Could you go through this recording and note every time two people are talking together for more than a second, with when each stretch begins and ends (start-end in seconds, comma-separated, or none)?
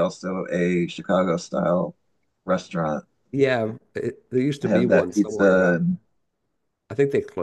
4.6-5.8